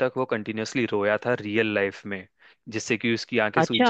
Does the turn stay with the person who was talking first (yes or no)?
yes